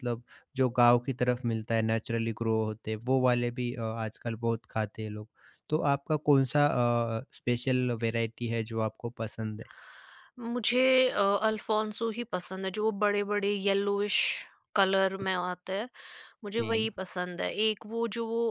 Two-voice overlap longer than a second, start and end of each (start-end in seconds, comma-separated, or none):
none